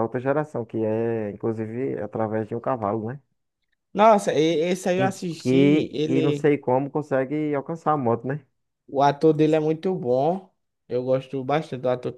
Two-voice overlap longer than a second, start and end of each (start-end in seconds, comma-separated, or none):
5.0-6.5